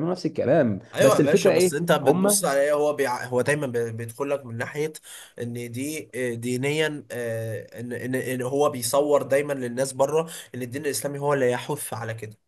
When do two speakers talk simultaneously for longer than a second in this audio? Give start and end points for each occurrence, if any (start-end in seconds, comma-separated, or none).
0.9-2.5